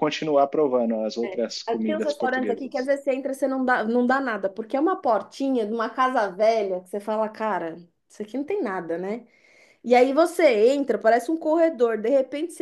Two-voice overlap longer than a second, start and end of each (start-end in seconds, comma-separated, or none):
1.7-2.9